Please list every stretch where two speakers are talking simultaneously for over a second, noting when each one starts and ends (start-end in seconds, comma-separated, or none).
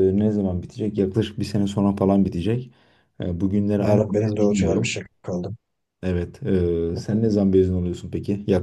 3.8-5.0